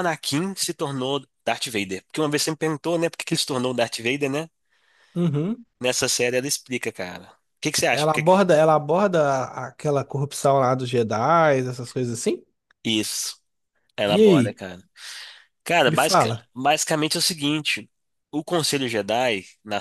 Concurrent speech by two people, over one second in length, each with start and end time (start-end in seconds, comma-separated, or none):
none